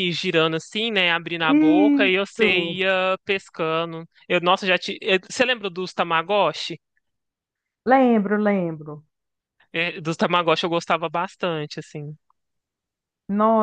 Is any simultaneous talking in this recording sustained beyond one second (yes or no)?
yes